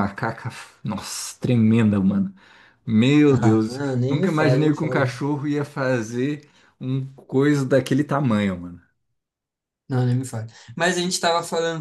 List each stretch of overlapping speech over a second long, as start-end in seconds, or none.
3.3-5.0